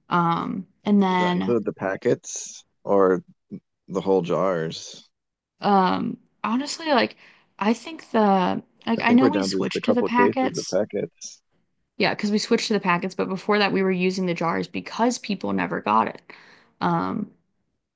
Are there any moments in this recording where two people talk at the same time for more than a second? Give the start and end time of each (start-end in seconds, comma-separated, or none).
9.0-10.8